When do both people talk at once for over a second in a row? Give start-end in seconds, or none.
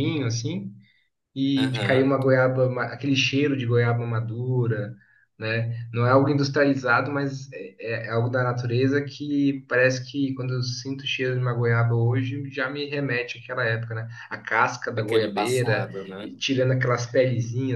14.9-16.3